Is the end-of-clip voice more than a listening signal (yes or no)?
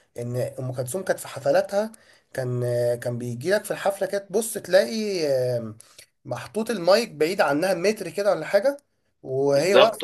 no